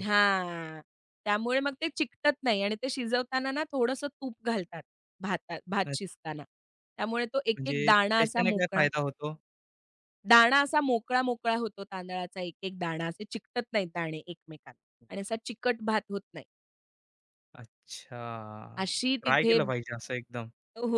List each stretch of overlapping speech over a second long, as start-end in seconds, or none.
7.6-8.8